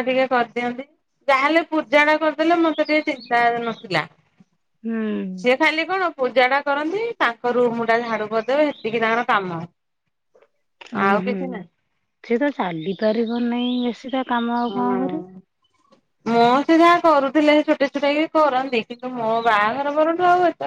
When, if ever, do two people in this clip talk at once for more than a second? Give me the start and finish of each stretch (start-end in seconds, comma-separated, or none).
none